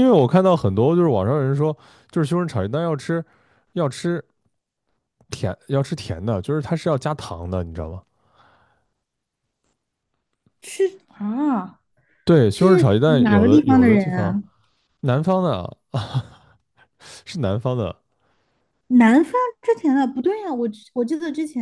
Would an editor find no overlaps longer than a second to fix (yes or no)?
no